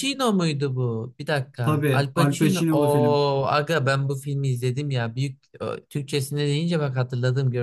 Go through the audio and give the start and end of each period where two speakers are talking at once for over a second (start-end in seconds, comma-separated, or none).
1.6-3.2